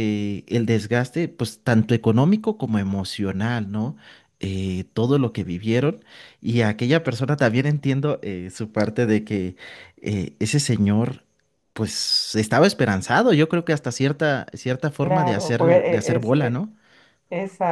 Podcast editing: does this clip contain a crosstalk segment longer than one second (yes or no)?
yes